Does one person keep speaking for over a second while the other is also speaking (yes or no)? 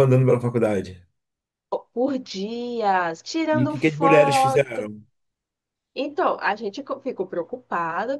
yes